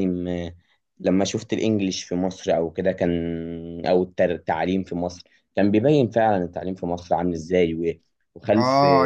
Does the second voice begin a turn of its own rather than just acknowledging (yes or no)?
yes